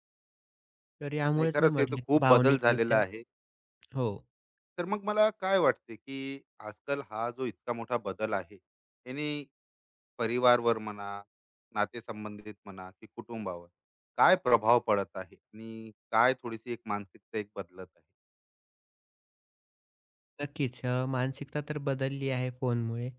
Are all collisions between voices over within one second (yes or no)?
no